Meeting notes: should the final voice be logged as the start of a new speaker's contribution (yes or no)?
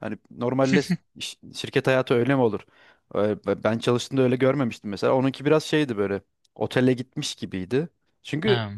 no